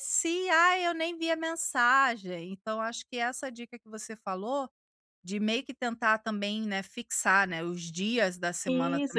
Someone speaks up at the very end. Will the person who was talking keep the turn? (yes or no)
no